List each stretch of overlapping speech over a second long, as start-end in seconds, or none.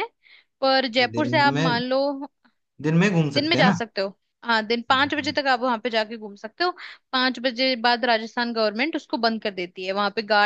none